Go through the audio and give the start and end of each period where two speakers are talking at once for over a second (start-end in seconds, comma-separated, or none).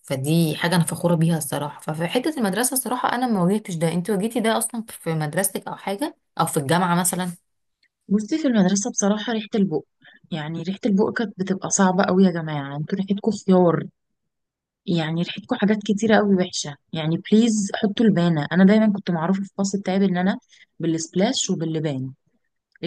none